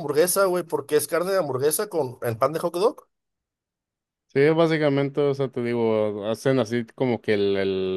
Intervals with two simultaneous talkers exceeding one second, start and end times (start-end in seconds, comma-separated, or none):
none